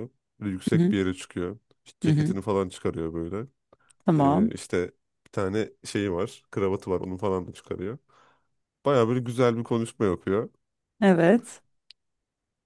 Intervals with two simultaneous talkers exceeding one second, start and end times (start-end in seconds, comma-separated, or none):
none